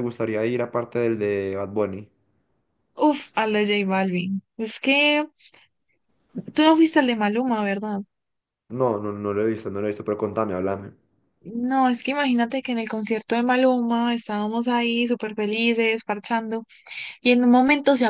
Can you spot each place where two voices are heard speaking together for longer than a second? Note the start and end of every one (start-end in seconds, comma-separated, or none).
none